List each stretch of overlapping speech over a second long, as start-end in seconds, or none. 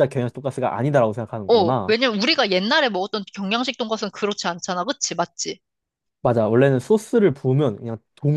none